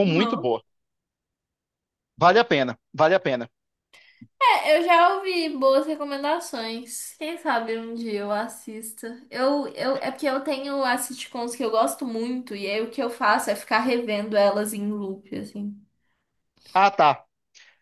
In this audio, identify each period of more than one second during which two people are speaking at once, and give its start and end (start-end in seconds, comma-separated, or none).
none